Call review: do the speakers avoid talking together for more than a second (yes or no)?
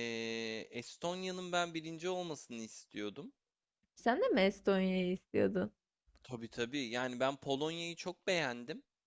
yes